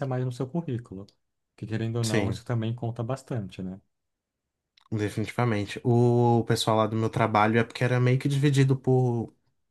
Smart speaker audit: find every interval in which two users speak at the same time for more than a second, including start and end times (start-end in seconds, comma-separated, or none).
none